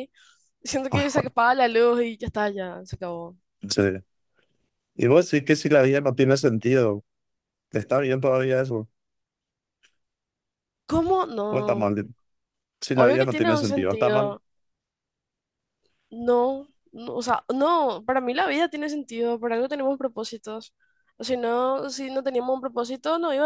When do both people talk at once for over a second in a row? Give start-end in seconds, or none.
12.9-14.3